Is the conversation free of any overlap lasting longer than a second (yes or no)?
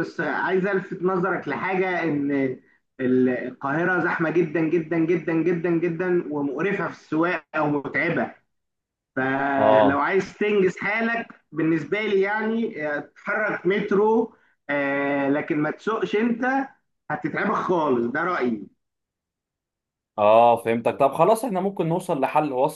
yes